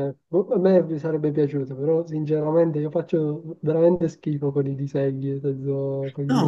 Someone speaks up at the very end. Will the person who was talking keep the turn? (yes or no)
no